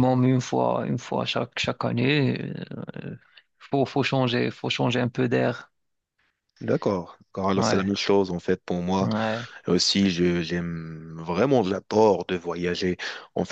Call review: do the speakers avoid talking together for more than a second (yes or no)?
yes